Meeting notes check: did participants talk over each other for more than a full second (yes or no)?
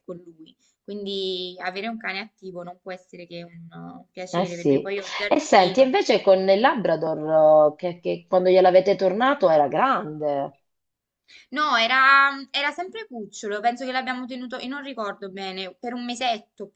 yes